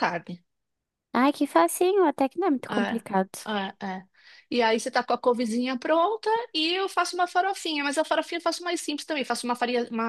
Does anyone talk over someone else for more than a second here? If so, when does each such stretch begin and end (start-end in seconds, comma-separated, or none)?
none